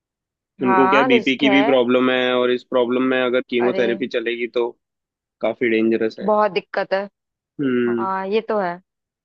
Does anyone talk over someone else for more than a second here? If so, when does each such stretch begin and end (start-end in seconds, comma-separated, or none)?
0.6-1.8